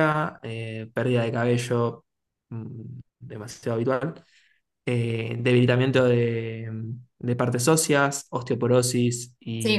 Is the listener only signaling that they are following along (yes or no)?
no